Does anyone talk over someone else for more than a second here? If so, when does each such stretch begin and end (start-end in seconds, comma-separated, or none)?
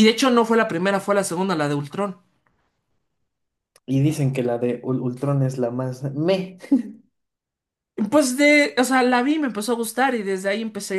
none